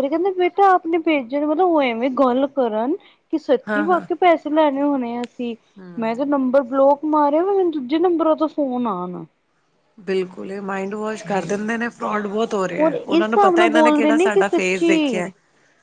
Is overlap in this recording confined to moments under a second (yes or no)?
no